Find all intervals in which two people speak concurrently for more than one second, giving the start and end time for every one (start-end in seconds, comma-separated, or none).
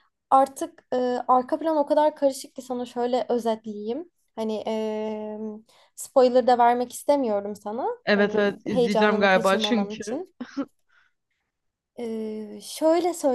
8.0-10.2